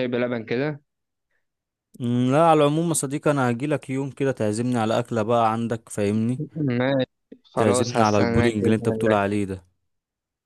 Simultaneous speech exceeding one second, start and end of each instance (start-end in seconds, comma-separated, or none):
7.5-9.2